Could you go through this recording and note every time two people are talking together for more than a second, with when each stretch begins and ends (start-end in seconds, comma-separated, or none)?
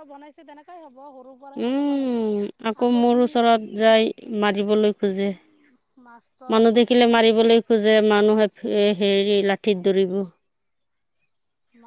none